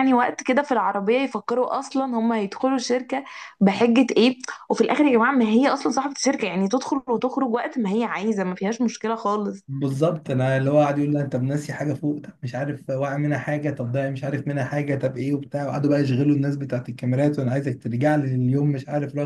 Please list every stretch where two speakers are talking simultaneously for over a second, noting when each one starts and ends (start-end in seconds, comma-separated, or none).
none